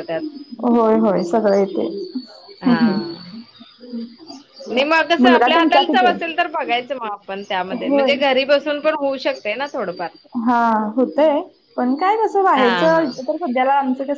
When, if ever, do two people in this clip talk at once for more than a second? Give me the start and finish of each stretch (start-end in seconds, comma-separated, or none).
none